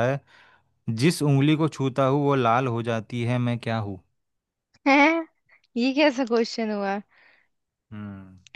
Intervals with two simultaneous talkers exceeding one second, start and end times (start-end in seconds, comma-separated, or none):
none